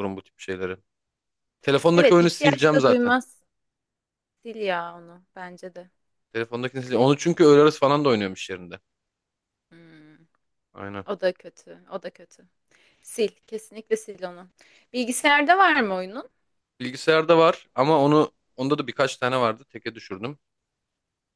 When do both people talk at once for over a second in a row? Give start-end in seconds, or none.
1.9-3.2